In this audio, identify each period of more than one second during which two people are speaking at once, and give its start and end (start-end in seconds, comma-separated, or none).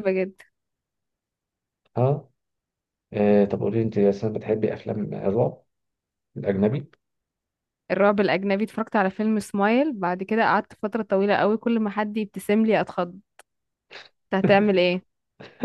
none